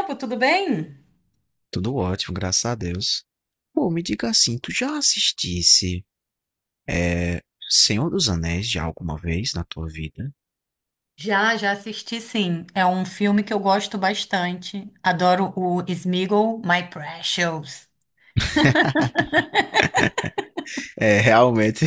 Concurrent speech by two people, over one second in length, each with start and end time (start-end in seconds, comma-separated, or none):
none